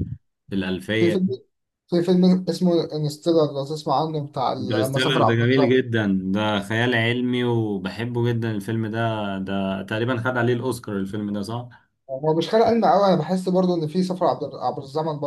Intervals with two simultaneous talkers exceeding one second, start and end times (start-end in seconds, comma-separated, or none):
4.6-5.8